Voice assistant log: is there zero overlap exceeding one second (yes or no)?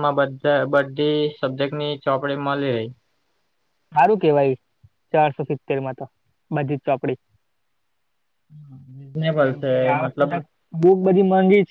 yes